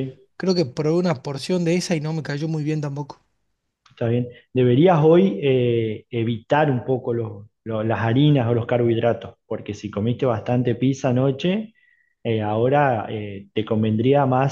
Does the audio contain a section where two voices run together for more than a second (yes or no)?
no